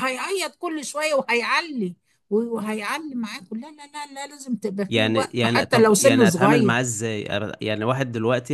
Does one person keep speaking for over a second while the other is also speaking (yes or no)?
yes